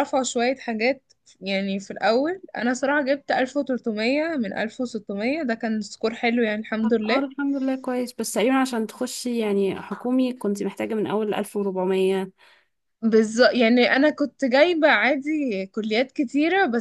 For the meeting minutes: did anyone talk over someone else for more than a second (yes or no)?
no